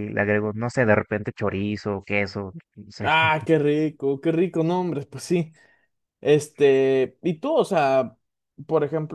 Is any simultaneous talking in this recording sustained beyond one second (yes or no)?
no